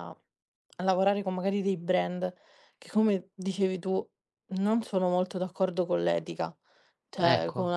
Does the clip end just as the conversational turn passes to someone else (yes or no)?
no